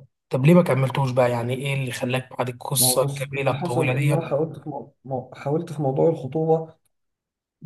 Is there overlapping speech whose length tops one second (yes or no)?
yes